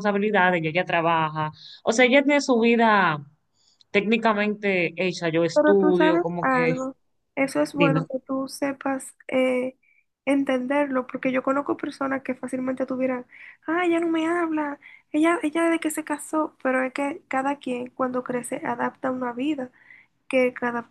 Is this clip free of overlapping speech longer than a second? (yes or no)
no